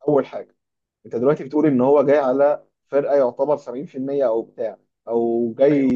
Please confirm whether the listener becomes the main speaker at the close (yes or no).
no